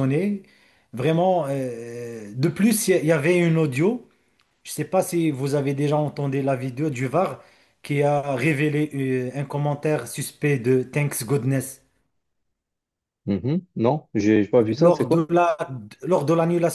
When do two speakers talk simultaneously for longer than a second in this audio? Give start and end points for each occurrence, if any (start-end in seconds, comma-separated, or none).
none